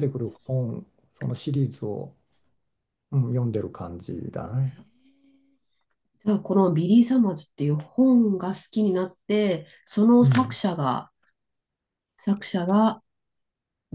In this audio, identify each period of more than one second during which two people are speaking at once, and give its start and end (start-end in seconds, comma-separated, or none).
none